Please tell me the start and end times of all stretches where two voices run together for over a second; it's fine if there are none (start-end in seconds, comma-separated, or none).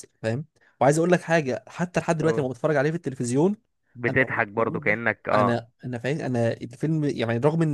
4.1-5.5